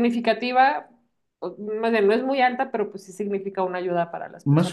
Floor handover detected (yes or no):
yes